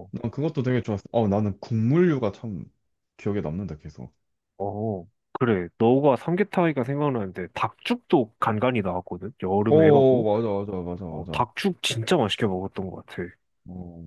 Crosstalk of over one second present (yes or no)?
no